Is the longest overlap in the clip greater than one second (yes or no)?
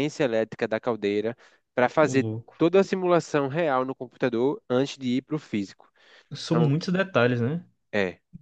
no